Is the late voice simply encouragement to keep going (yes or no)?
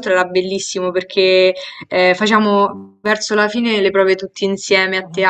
yes